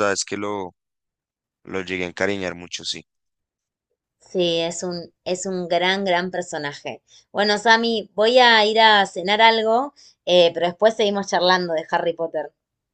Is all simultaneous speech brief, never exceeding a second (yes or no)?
yes